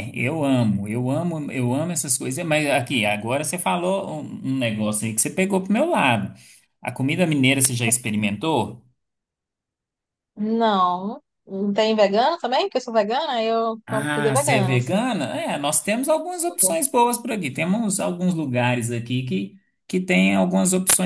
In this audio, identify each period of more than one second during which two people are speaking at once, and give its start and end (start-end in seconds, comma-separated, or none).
13.8-15.1